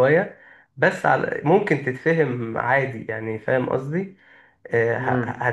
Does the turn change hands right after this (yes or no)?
no